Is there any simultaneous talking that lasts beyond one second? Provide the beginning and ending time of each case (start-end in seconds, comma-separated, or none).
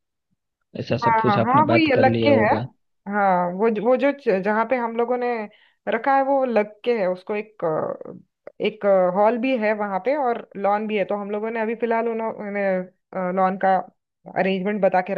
1.0-2.5